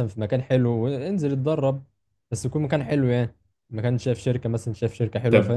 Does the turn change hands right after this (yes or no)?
yes